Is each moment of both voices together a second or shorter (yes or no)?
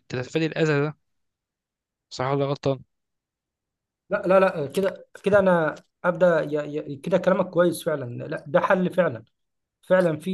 yes